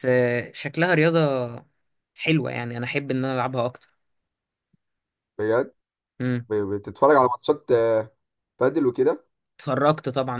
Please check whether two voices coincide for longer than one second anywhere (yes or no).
no